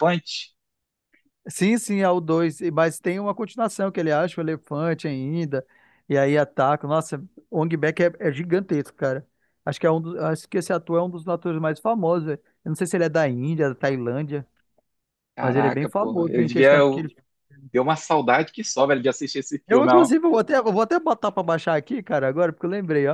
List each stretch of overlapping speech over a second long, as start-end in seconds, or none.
15.4-17.1